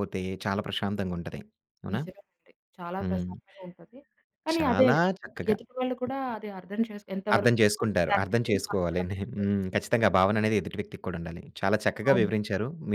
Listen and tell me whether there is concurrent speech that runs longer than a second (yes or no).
yes